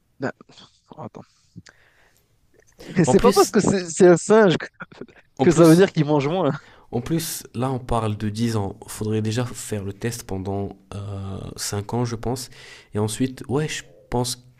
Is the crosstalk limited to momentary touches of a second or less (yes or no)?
yes